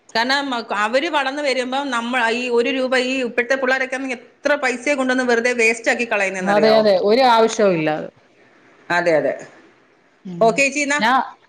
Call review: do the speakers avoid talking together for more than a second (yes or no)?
yes